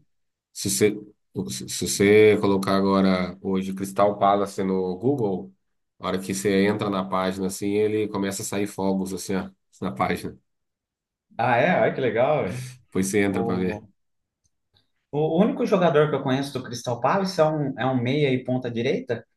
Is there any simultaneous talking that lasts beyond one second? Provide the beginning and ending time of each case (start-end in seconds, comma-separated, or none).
none